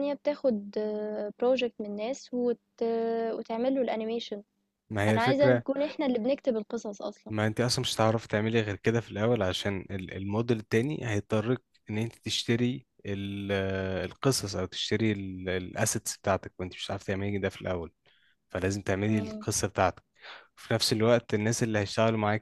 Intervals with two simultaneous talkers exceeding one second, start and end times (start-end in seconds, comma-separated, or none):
none